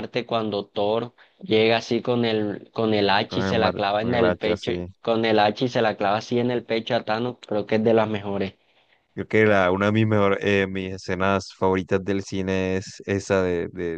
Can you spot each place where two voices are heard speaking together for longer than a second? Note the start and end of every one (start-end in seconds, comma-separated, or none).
3.3-4.9